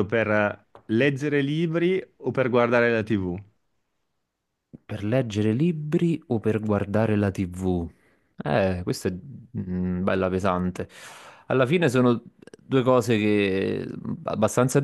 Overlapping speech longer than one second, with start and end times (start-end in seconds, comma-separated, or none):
none